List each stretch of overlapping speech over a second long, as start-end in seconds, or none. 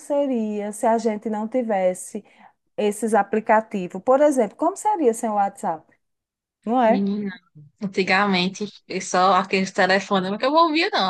none